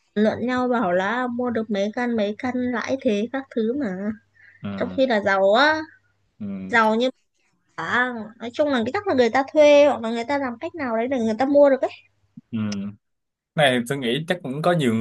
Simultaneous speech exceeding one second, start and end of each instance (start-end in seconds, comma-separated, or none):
none